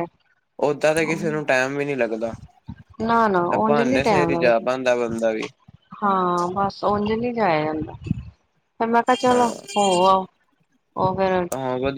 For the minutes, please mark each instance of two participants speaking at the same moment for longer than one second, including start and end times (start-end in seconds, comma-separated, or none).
3.6-5.1